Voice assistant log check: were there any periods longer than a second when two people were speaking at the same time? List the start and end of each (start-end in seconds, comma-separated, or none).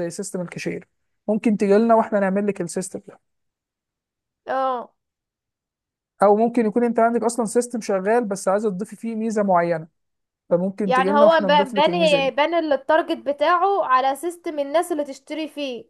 10.8-12.3